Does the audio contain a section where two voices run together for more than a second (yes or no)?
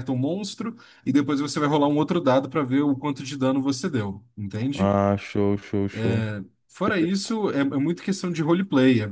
no